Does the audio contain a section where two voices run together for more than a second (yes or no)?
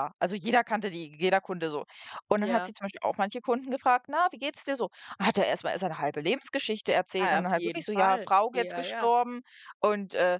yes